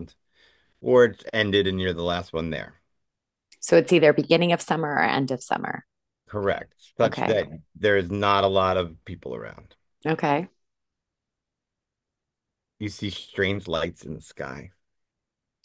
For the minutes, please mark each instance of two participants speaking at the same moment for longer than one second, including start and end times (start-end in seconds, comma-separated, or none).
none